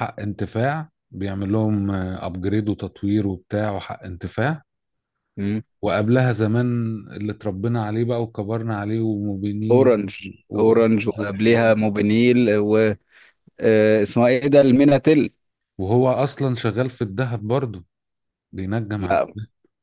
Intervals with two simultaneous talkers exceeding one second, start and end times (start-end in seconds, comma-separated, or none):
10.6-11.9